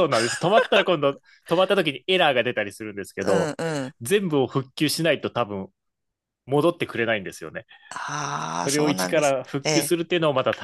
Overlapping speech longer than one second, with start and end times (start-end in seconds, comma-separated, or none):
8.6-9.9